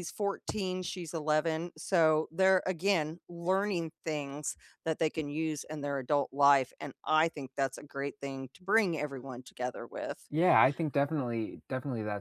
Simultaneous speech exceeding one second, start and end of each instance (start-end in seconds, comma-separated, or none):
none